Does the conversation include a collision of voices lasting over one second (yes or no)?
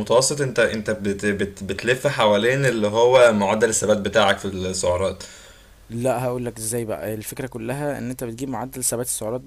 no